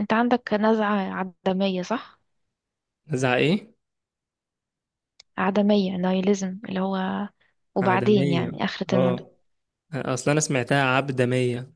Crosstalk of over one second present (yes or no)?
yes